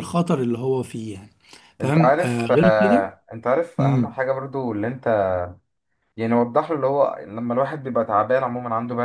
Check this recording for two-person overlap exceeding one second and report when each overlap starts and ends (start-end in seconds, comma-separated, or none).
1.8-3.1